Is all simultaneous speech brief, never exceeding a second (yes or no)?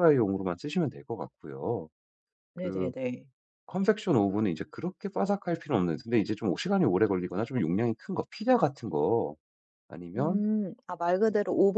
yes